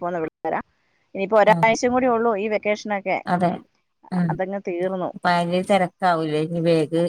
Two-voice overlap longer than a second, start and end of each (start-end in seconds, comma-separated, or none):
none